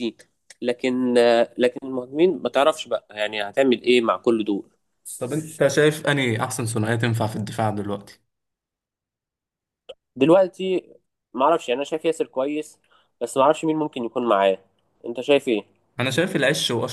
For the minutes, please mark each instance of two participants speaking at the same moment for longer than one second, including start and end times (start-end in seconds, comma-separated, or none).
none